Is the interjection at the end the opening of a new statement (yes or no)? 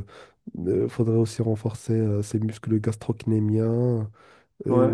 no